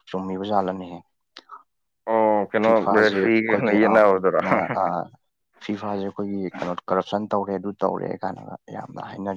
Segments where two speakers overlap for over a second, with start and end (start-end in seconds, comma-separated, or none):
2.6-3.9